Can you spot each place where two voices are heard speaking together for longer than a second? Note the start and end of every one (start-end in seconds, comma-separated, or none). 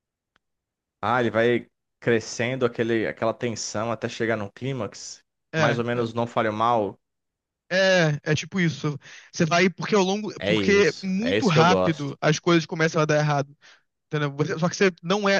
10.4-12.1